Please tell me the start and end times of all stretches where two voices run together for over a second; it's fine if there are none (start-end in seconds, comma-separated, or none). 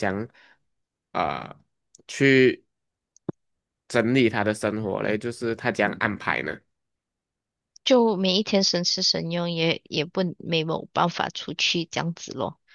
none